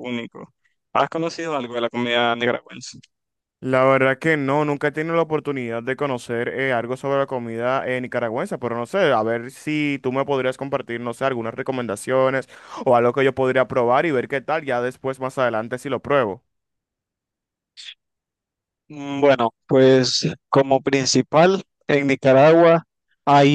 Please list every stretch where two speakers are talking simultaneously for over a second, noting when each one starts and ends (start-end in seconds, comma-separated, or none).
none